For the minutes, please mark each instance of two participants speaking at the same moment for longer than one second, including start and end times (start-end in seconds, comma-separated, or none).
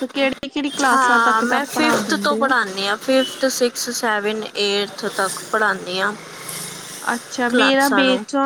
0.9-2.5